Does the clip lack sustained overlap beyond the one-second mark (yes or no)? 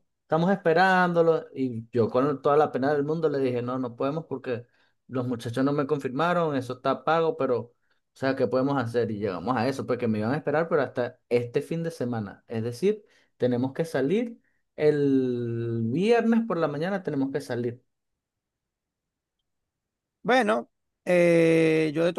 yes